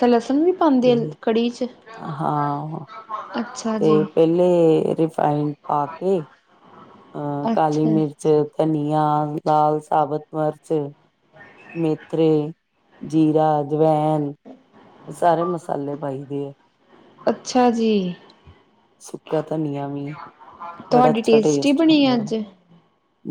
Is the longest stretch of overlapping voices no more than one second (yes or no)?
no